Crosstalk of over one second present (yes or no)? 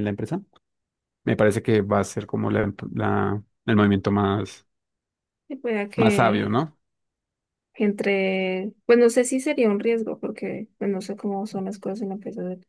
no